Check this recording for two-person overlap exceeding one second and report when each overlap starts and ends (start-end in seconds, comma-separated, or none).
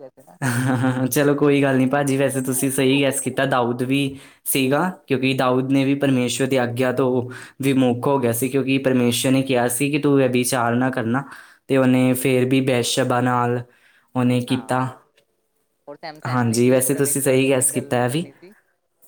16.3-18.2